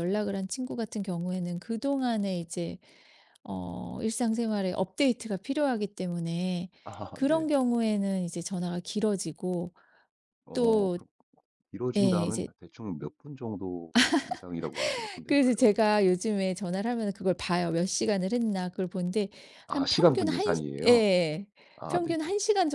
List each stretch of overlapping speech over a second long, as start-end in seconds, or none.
19.7-21.0